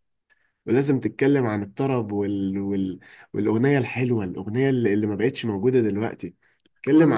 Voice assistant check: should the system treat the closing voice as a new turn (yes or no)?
no